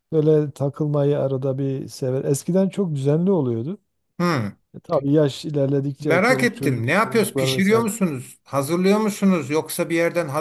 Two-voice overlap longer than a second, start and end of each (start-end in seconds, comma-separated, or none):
6.0-7.9